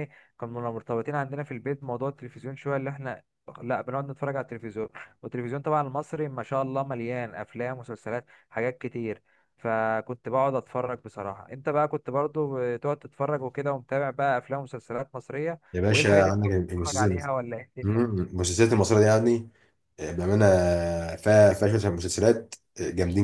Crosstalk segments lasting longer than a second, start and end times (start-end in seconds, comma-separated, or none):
15.7-17.2